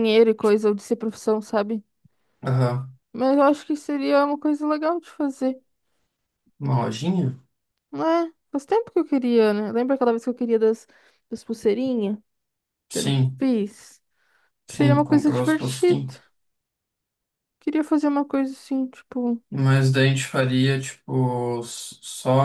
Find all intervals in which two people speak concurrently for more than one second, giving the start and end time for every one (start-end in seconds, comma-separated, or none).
14.7-16.0